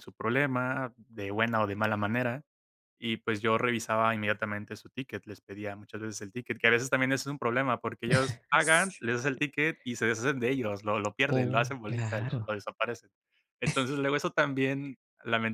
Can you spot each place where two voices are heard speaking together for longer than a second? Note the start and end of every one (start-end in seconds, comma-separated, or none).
11.3-12.5